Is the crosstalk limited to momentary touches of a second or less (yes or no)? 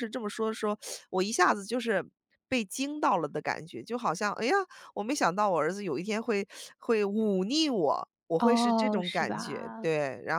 no